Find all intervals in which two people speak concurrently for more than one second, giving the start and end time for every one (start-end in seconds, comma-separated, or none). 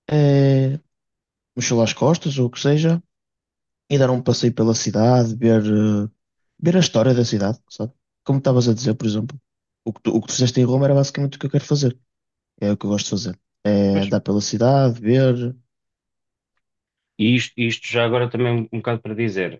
none